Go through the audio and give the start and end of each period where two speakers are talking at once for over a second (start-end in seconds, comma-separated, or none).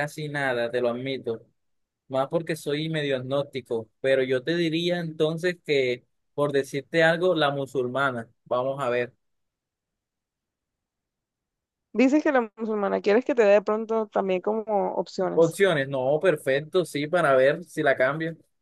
none